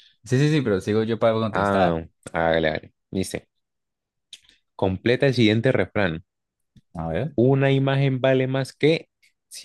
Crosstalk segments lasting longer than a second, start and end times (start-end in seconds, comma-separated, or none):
none